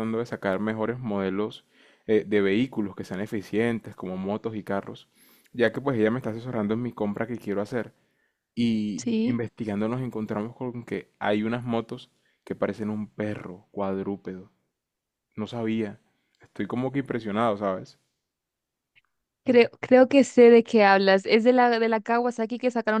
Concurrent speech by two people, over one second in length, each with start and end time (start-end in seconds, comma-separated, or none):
none